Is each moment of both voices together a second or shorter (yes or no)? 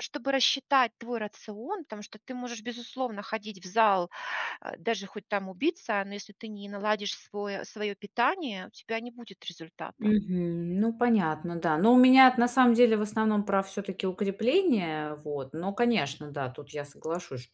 yes